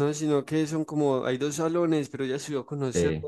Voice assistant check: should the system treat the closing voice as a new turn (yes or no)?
no